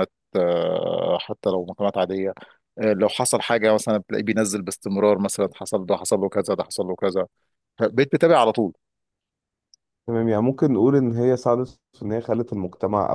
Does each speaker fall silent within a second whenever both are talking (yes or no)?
yes